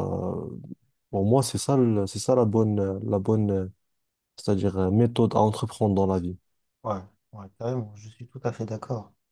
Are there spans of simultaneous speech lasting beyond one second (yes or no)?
no